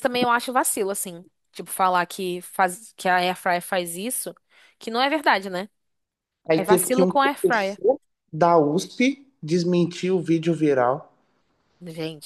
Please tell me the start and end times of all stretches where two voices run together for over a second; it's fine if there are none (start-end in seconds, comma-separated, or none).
6.6-7.8